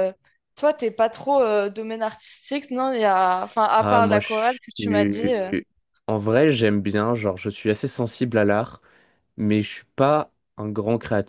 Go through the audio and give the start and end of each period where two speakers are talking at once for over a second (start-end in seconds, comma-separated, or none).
3.8-5.5